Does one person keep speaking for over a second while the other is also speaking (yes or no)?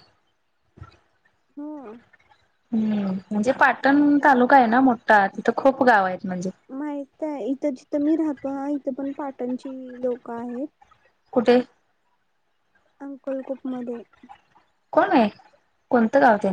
no